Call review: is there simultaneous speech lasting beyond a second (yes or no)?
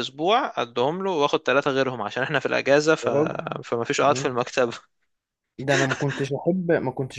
no